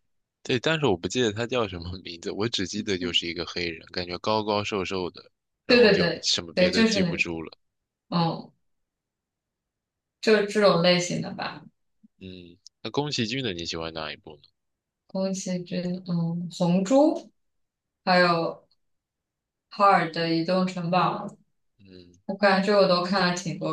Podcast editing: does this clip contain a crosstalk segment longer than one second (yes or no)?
yes